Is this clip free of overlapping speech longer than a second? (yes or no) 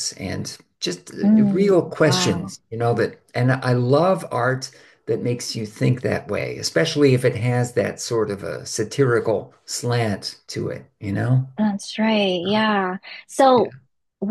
no